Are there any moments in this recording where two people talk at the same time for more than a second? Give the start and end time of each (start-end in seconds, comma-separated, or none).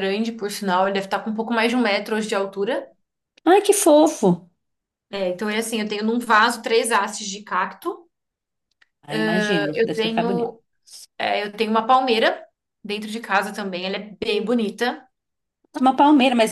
9.1-10.6